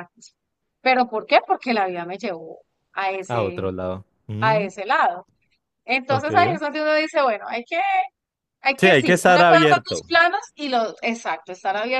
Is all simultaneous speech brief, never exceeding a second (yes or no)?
no